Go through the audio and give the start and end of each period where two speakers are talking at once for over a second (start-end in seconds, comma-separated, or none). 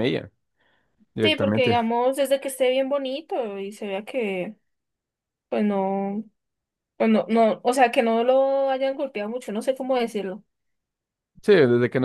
none